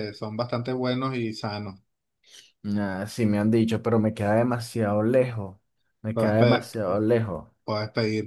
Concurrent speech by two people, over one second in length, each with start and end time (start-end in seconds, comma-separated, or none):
none